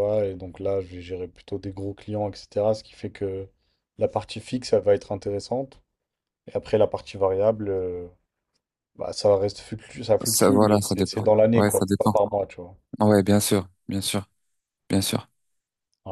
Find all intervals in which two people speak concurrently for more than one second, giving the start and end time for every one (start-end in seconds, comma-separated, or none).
10.2-12.1